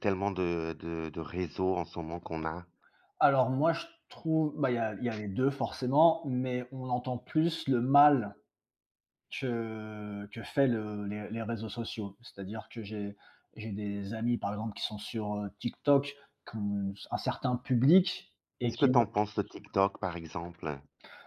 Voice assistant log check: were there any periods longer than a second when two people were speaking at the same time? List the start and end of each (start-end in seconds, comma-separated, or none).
none